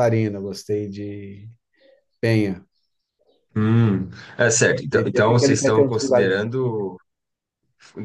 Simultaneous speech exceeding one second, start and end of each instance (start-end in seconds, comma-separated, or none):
4.9-6.3